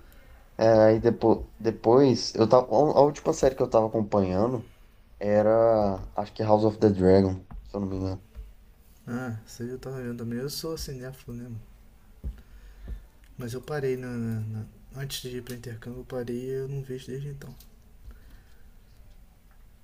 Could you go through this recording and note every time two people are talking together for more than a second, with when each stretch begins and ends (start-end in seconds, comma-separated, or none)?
none